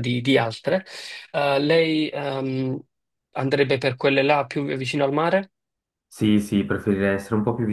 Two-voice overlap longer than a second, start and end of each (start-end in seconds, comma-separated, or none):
none